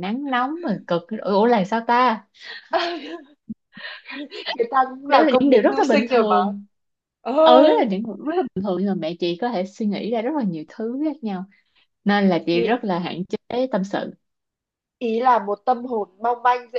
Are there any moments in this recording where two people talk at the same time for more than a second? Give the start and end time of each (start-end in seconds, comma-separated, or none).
5.1-6.4